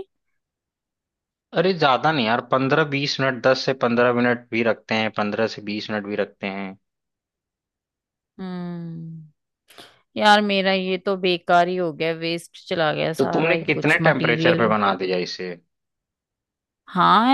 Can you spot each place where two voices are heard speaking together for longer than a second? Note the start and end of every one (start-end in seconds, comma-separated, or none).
13.2-14.7